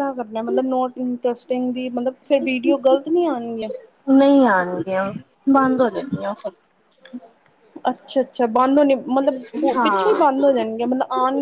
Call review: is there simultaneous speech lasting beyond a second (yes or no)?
no